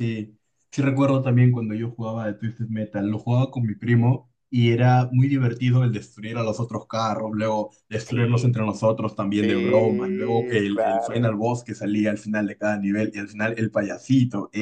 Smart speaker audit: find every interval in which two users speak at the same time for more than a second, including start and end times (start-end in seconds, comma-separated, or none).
9.4-11.3